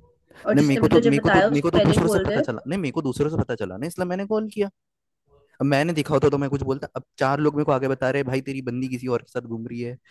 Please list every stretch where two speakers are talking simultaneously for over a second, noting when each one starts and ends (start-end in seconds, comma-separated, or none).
0.5-2.4